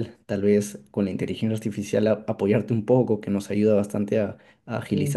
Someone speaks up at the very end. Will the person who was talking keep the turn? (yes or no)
yes